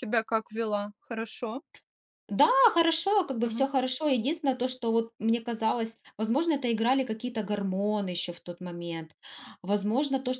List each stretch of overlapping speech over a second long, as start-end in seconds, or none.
none